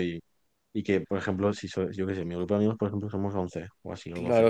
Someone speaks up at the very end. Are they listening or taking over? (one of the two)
taking over